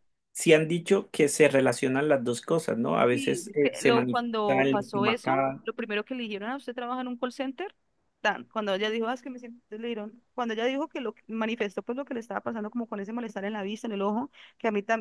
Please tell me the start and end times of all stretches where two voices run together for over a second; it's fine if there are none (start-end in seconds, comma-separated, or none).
3.1-5.6